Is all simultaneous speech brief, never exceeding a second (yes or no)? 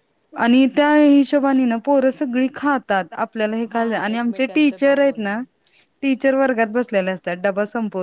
no